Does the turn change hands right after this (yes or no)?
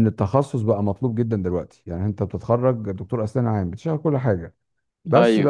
no